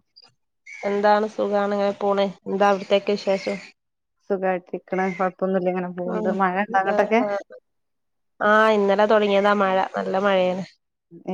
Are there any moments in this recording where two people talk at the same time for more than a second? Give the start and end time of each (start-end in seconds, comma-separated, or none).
none